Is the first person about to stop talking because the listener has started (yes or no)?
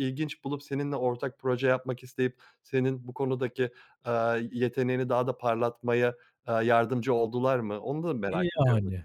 yes